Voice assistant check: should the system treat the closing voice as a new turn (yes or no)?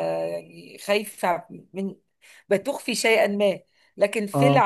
no